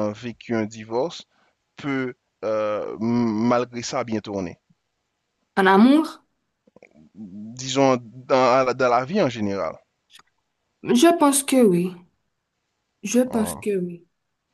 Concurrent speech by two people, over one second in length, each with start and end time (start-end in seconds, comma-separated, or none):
none